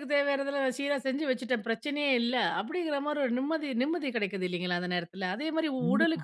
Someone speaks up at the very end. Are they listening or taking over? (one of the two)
listening